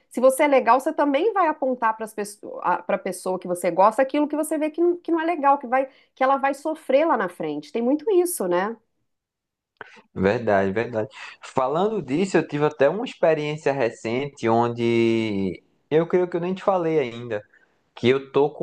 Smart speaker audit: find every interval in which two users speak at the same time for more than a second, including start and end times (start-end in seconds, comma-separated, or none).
none